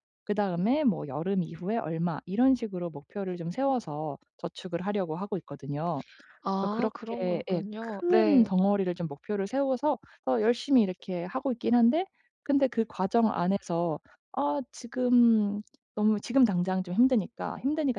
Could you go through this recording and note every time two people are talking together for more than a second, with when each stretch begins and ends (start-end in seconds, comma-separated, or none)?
6.5-8.5